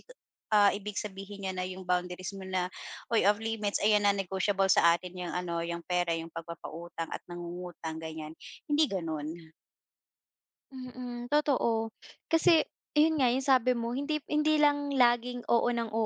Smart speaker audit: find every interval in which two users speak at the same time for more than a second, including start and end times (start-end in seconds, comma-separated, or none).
none